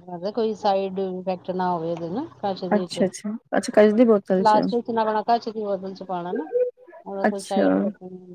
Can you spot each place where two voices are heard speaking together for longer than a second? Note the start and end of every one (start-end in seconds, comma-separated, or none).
none